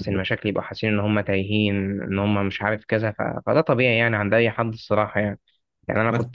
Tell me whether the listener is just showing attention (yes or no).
yes